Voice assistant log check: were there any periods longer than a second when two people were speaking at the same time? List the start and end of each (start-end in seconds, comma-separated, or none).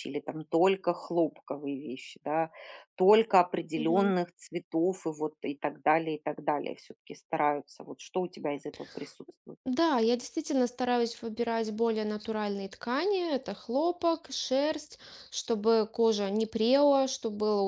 none